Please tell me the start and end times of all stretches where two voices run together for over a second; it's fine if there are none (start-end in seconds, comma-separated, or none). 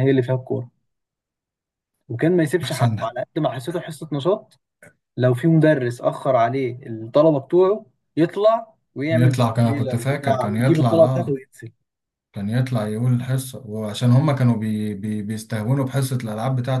9.1-11.4